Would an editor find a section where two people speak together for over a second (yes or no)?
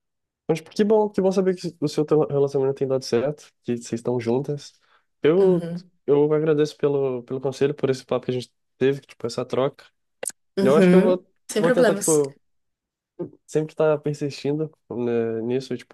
yes